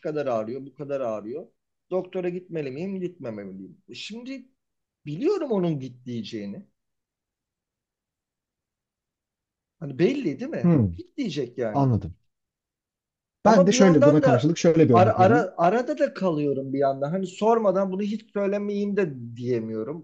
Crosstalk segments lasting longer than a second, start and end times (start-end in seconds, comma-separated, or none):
13.4-15.4